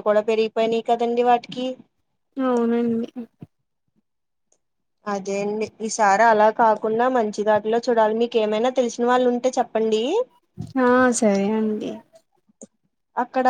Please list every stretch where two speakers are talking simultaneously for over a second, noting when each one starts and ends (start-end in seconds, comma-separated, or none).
none